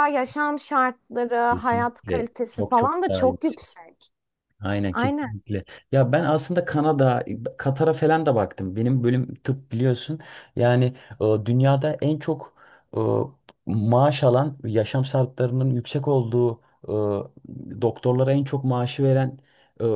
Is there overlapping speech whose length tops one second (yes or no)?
yes